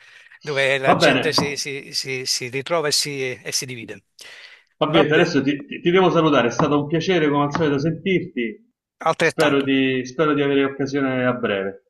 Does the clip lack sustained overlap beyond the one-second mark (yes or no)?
yes